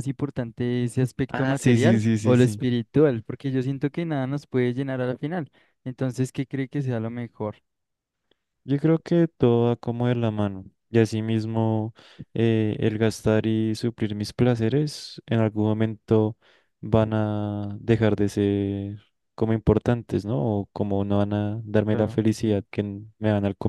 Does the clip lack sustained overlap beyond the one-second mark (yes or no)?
no